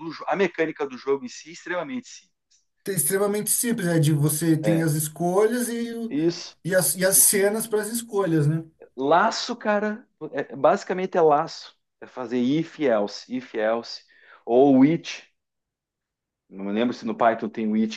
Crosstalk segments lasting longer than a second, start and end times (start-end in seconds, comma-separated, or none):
none